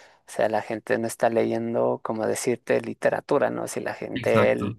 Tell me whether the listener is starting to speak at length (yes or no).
no